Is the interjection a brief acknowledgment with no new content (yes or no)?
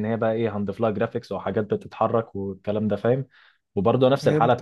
yes